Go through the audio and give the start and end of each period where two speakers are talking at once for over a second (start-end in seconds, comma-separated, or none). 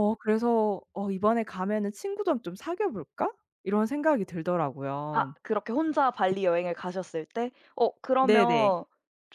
none